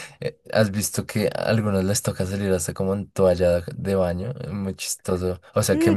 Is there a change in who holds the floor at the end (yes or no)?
yes